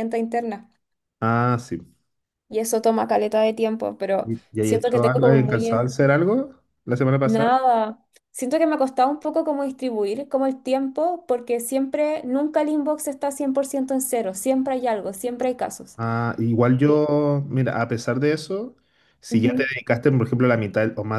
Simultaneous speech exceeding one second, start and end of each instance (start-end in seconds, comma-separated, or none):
4.2-5.9